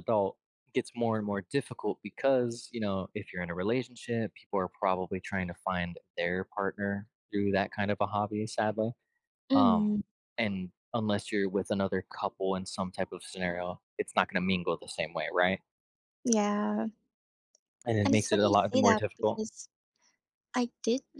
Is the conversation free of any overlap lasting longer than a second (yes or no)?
no